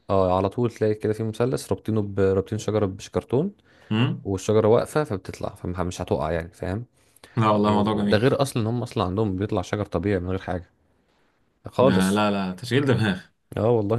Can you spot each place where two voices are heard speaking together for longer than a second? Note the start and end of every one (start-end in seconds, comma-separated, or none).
none